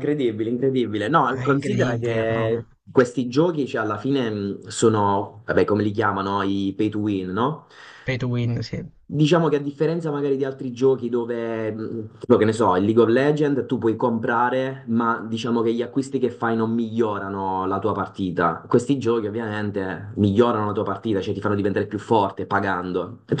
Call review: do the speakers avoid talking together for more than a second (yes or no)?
no